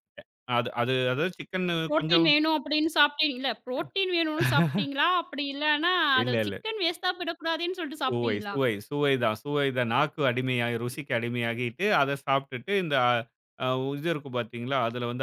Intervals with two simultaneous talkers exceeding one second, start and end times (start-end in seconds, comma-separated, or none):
none